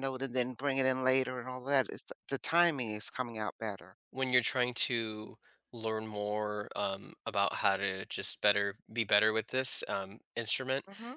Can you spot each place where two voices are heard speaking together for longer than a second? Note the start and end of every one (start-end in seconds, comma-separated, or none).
none